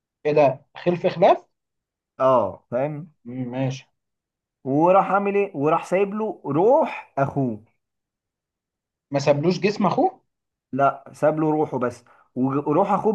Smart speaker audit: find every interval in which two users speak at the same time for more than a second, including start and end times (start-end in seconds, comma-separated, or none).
none